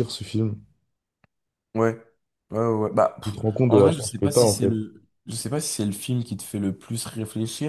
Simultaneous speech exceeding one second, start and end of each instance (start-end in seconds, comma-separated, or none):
3.2-4.7